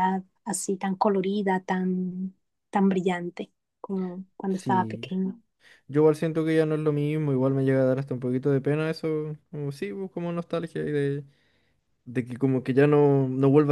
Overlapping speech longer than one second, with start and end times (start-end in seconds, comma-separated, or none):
none